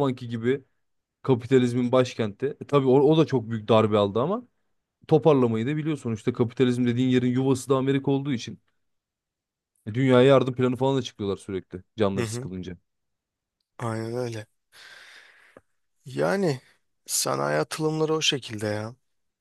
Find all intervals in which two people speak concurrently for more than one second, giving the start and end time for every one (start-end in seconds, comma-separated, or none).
none